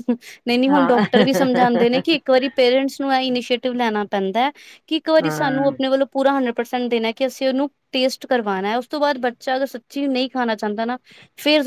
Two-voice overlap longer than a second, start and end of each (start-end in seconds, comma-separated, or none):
0.7-2.0